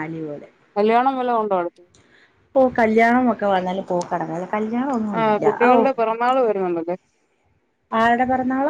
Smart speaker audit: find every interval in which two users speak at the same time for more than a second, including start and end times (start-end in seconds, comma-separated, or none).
none